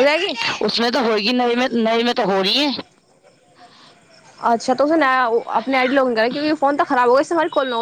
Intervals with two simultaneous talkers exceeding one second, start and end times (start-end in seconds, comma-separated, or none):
none